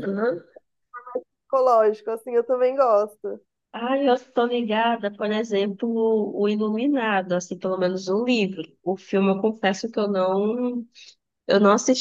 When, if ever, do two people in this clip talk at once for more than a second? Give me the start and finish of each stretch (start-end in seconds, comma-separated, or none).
none